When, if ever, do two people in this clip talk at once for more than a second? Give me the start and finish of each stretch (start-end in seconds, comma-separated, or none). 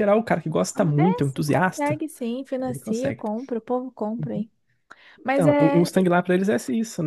0.8-2.0